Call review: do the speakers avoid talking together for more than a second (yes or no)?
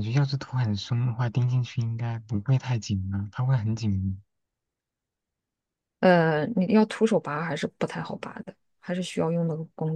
yes